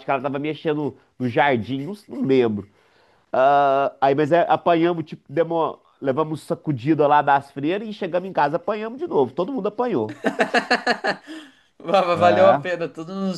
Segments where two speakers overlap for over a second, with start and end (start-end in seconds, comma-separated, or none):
none